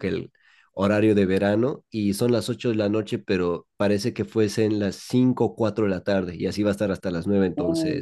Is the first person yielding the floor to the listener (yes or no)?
yes